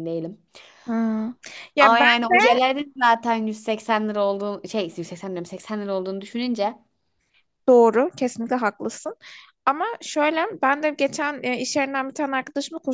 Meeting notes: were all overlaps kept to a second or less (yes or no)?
yes